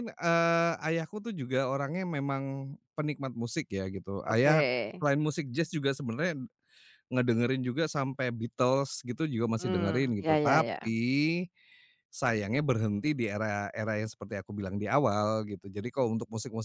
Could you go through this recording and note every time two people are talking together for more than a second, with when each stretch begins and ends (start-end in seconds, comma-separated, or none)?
9.6-10.9